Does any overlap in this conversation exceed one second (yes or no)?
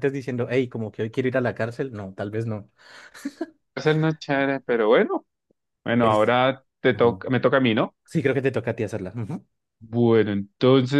no